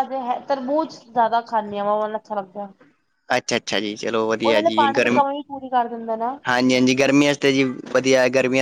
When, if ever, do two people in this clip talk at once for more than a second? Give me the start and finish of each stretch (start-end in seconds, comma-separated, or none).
4.4-6.4